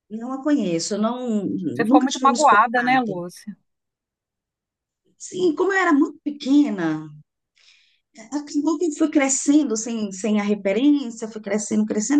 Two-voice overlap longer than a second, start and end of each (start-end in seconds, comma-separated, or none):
1.9-3.2